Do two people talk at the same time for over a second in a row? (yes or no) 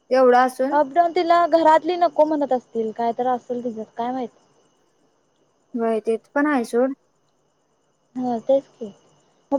no